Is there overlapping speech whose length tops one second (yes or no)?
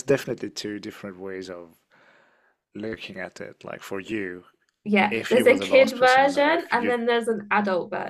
yes